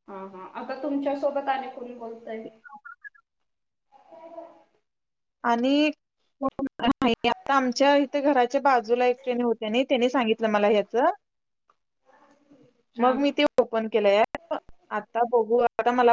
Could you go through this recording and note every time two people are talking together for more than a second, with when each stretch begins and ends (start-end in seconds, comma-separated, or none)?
none